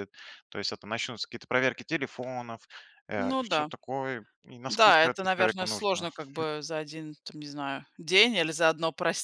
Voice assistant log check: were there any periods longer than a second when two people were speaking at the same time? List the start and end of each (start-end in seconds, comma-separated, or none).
4.7-6.0